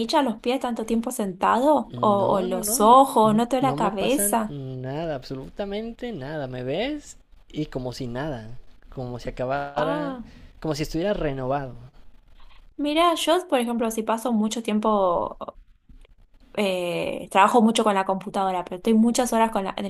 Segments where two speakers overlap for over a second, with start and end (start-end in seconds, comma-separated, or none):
1.9-4.6